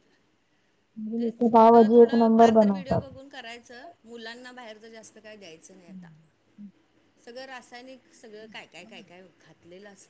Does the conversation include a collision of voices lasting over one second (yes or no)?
yes